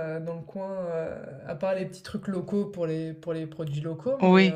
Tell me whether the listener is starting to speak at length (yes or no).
yes